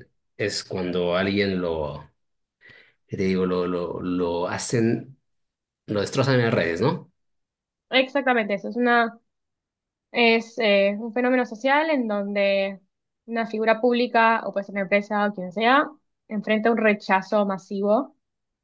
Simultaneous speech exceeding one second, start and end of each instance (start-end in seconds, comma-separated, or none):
none